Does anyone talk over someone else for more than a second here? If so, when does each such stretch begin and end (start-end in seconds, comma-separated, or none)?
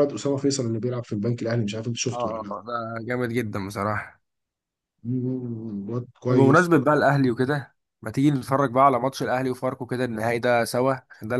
none